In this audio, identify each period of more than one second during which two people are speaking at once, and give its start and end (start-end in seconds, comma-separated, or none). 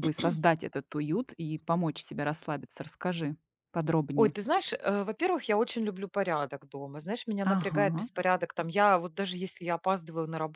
none